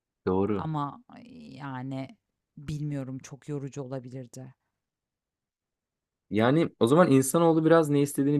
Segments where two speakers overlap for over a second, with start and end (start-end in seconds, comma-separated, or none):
none